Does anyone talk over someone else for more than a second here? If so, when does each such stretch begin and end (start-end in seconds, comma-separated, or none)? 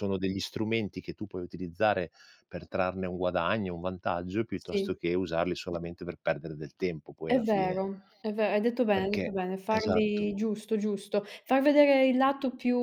8.9-10.3